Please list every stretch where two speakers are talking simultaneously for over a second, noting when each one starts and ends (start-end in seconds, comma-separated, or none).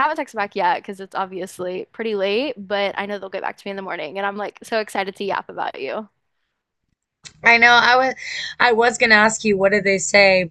none